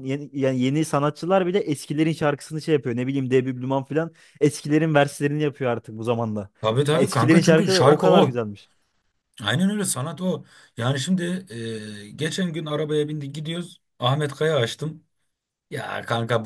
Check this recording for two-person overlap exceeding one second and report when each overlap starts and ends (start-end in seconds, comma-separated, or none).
6.9-8.4